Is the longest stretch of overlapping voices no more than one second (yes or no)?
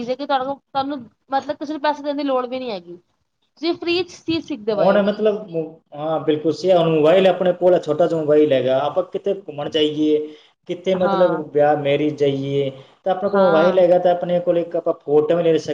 yes